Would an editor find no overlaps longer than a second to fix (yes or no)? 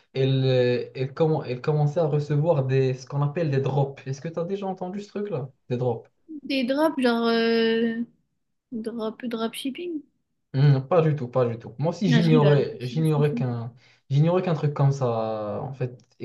no